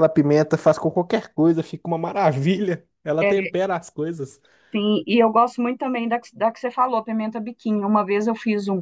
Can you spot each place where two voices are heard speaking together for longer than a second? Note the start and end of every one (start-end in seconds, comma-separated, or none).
none